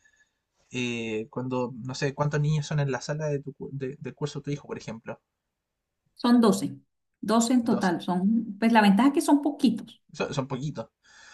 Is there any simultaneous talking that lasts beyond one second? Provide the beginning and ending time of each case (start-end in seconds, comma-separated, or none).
none